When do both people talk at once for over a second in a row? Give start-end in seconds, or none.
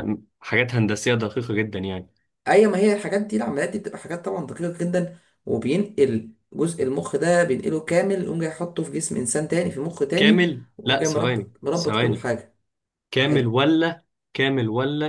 10.2-12.3